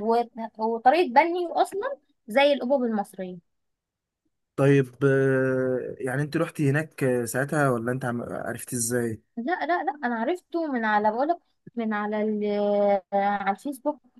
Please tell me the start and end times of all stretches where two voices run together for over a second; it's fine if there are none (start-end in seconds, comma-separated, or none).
none